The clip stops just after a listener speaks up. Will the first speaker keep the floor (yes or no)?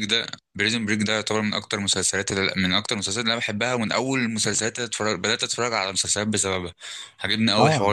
yes